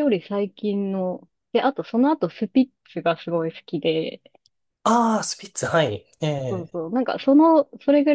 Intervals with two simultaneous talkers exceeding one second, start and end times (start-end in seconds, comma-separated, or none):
none